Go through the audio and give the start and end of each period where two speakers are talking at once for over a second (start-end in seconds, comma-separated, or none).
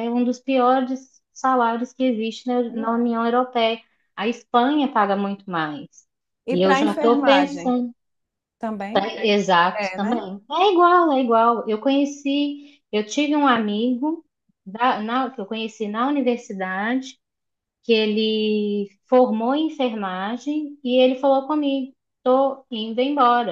6.5-7.7